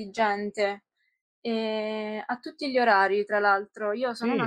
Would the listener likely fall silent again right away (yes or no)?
yes